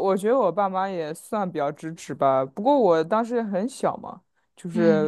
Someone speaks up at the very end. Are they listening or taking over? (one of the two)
listening